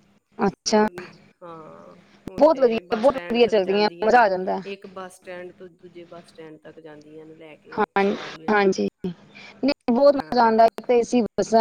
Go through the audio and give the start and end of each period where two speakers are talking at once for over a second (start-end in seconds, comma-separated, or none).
2.4-4.2